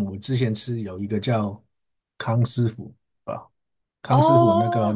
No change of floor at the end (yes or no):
yes